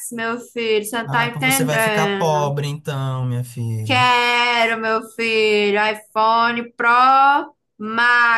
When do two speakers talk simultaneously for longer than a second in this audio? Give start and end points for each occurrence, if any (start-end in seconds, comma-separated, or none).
1.1-2.5